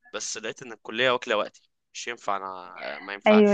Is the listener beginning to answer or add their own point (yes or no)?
yes